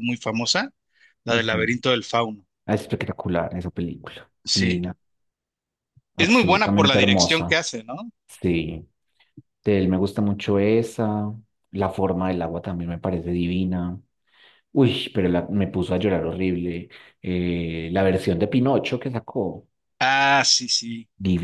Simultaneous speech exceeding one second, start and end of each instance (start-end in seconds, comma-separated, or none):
6.2-7.6